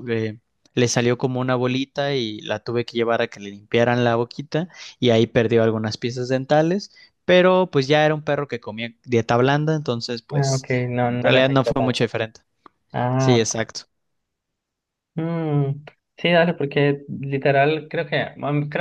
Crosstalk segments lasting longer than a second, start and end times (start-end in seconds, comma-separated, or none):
10.3-12.1